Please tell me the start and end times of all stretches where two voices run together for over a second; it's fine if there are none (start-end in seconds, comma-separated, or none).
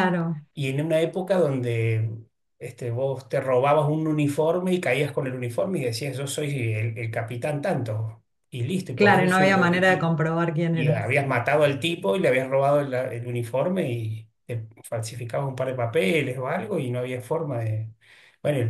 none